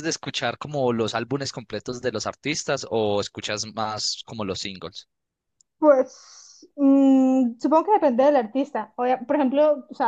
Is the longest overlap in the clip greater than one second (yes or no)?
no